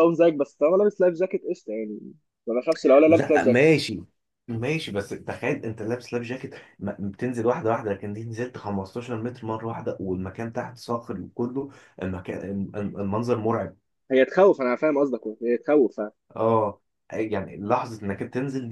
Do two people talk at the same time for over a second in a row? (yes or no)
no